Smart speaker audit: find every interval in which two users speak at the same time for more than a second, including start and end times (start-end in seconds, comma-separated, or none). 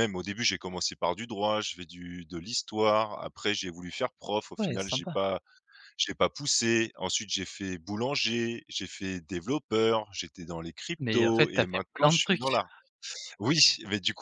11.0-12.6